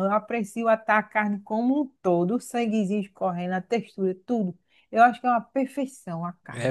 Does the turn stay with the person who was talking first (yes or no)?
no